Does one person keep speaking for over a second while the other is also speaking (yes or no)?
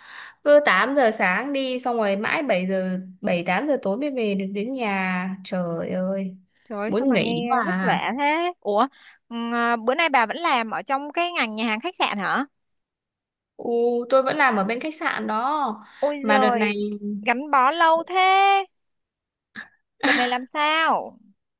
yes